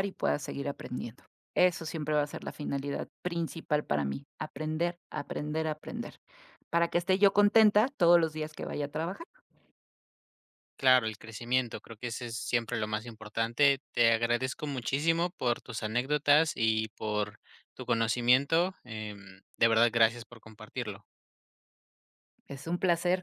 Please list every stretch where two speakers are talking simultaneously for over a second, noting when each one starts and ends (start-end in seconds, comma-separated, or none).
none